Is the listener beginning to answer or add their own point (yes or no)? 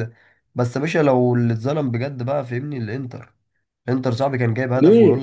no